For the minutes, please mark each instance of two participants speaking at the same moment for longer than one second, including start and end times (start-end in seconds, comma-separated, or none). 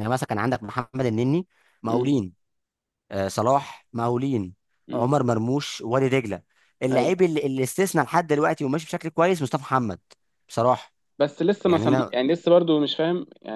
none